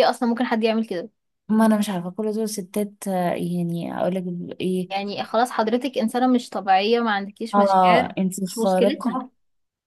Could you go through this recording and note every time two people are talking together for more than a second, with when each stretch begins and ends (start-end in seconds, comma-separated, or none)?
7.5-9.2